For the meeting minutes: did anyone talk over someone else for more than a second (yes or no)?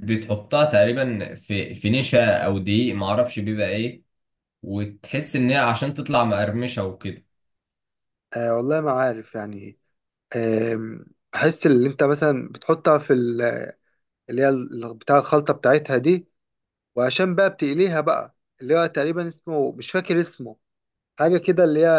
no